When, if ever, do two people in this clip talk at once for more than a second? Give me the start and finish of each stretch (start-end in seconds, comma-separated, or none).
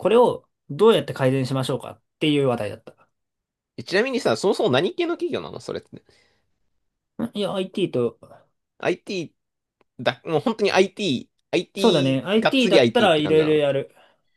11.8-13.6